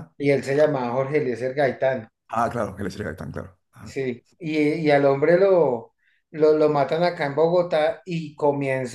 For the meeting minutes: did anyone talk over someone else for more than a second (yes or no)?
no